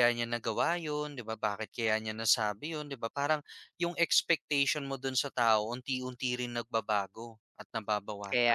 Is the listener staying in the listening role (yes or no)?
no